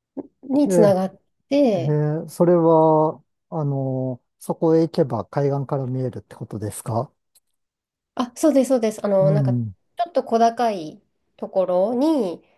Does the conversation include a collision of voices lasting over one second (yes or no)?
no